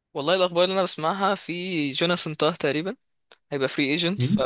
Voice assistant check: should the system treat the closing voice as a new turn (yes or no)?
no